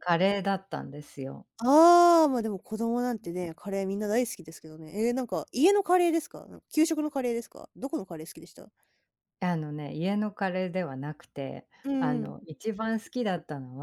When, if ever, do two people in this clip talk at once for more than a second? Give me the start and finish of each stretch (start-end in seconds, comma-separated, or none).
none